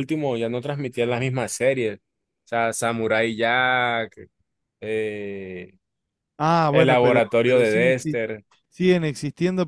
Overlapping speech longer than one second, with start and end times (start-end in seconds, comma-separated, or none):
6.7-8.2